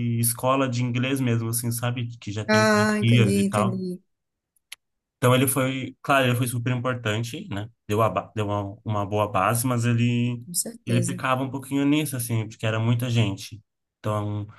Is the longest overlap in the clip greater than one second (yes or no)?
yes